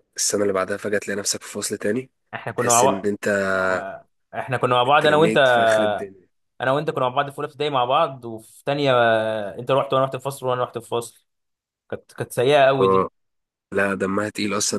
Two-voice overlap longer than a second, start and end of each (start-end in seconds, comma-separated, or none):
none